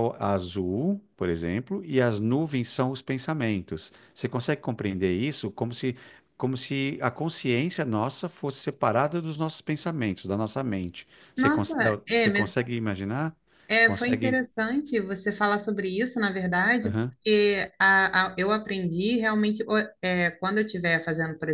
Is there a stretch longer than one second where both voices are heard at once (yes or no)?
yes